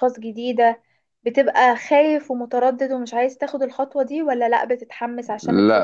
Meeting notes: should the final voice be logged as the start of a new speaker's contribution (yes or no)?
yes